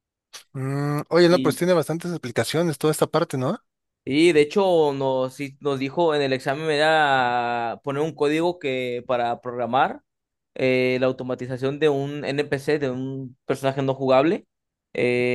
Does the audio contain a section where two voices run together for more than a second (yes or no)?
no